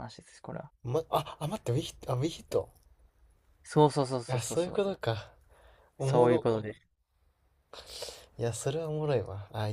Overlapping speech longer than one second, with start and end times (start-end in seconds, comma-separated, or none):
none